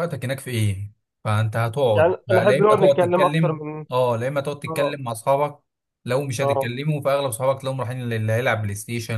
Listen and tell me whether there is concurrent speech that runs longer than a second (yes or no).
yes